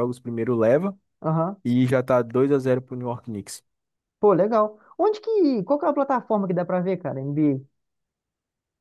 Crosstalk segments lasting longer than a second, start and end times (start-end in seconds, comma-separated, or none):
none